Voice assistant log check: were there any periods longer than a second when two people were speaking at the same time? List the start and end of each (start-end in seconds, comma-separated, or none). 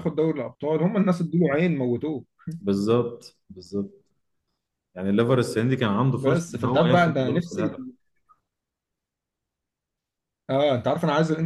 6.1-7.6